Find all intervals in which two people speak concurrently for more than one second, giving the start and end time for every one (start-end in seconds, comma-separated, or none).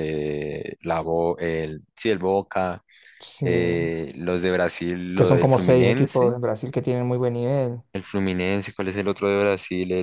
5.1-6.3